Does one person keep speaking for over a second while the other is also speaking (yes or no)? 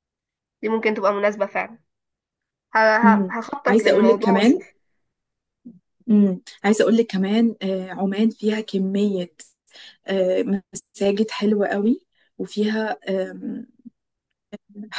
yes